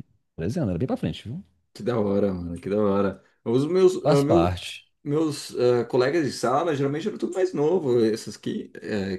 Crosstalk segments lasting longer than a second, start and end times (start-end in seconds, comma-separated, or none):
none